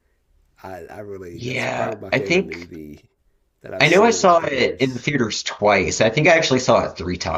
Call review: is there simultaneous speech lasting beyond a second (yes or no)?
yes